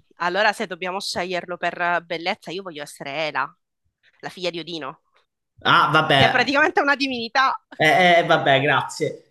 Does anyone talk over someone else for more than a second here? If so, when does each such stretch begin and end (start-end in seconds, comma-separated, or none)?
none